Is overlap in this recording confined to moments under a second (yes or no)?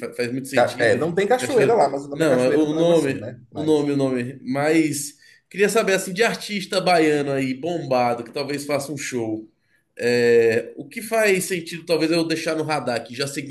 no